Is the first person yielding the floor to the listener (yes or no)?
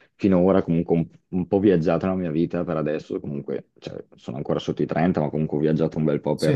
no